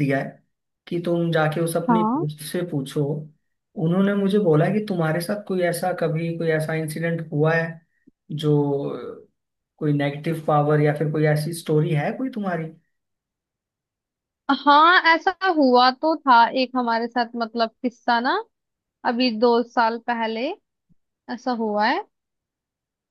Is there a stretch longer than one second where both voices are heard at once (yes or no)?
no